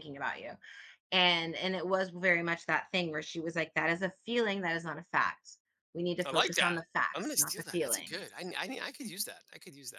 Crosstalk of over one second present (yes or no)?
yes